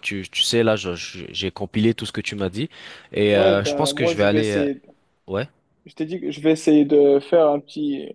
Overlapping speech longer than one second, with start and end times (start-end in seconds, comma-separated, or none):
3.3-4.7